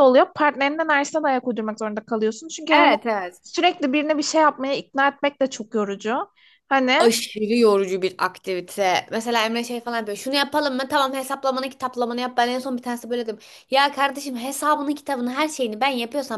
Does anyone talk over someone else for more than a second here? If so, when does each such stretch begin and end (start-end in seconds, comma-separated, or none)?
none